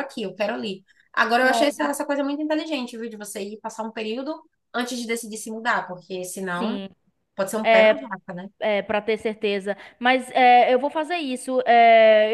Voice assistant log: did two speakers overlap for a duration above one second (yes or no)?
no